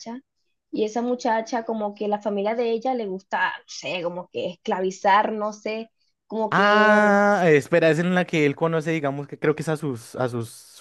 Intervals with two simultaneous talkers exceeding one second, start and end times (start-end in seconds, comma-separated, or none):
none